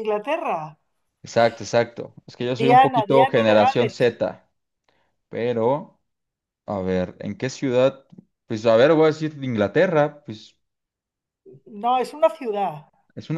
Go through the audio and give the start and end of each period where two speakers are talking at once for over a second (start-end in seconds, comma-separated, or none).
2.6-4.2